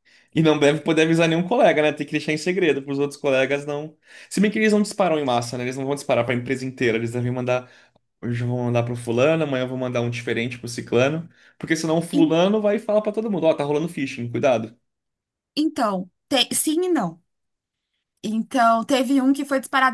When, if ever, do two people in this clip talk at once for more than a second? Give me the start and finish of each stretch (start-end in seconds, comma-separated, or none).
none